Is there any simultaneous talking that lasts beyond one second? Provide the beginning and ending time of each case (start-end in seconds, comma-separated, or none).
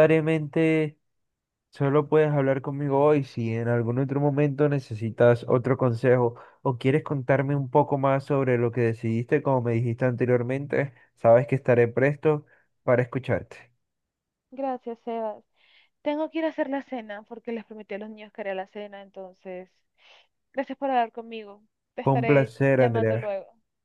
22.0-23.3